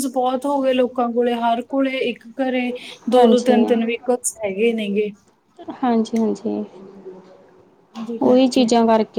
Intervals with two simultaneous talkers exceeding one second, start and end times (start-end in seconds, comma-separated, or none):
none